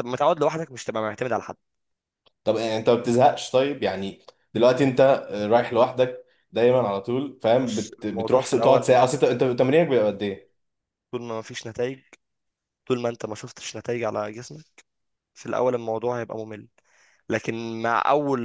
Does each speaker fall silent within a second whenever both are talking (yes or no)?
no